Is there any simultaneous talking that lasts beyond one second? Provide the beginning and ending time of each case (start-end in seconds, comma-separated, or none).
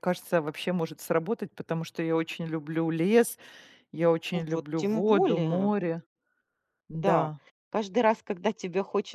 4.3-5.7